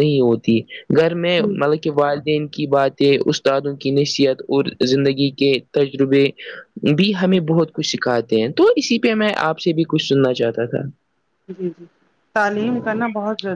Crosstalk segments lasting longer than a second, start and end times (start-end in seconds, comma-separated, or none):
none